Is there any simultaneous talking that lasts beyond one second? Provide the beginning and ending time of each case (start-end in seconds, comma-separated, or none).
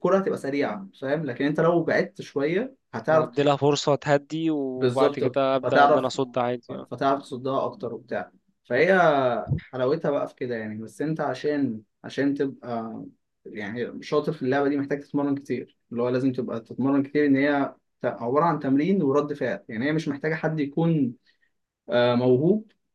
4.8-6.1